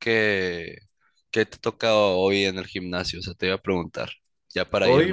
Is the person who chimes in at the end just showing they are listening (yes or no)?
no